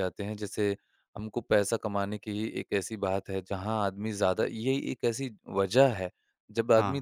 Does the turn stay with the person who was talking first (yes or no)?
yes